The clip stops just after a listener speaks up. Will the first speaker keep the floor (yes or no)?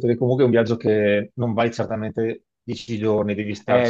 no